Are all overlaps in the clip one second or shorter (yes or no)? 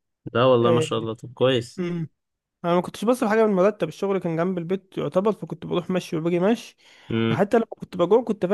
yes